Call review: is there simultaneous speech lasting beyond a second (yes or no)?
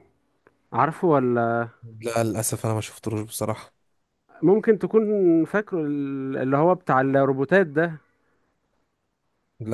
no